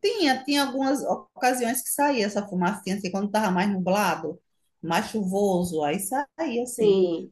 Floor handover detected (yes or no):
no